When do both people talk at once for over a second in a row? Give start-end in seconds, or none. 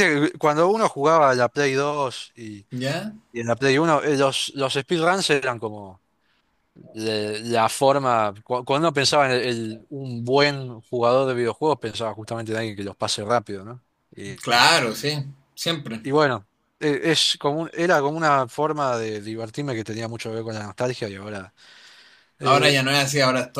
none